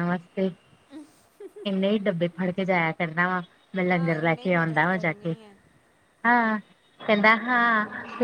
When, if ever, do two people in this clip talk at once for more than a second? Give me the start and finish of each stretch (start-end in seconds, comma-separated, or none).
3.9-5.3